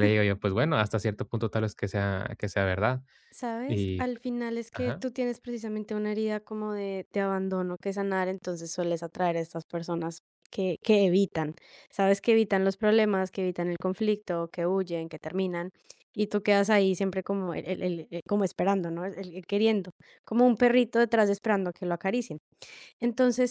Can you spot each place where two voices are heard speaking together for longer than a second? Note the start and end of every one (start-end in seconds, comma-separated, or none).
none